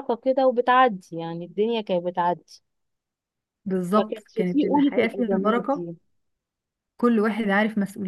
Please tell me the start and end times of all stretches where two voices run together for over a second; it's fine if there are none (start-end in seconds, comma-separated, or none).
4.0-5.8